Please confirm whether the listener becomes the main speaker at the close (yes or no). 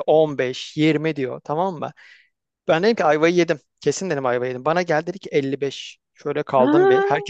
no